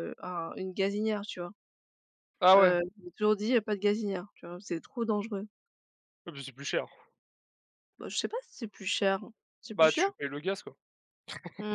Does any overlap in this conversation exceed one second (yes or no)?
no